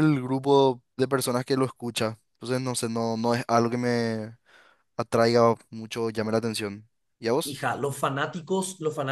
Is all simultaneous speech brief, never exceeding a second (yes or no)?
yes